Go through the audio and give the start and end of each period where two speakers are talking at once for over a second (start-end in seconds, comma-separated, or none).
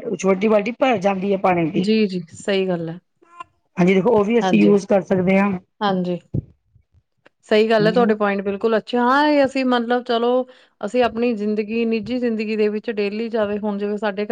none